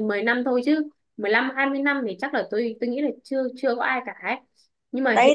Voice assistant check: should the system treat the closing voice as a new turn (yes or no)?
yes